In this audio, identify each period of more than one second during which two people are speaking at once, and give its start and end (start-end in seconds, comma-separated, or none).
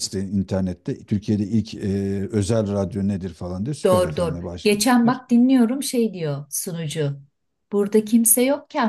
3.9-5.2